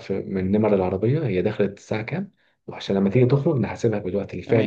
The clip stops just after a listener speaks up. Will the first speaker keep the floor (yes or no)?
no